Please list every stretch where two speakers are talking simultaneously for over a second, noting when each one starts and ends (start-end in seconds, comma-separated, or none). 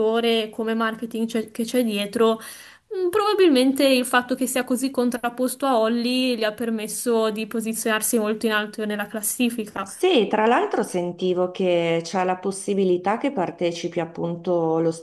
none